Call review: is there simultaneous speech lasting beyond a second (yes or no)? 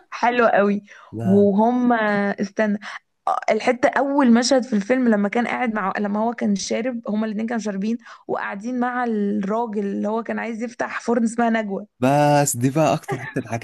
no